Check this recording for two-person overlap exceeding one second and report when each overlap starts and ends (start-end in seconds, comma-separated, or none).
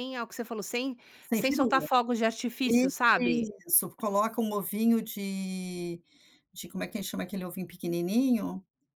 none